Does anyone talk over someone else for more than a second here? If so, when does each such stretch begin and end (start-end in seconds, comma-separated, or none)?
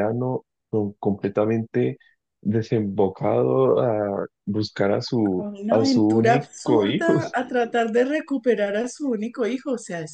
5.4-7.2